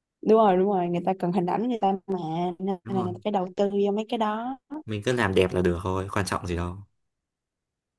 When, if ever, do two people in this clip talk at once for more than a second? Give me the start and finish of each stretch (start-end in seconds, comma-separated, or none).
none